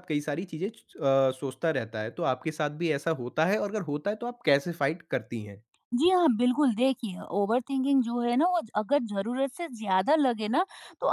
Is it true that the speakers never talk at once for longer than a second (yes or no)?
yes